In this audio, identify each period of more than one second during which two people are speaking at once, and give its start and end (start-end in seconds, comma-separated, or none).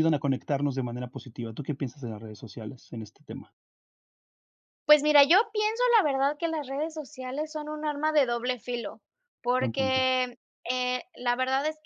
none